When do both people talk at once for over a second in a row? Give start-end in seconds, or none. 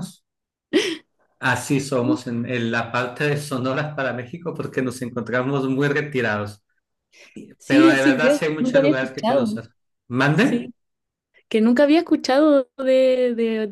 7.7-9.5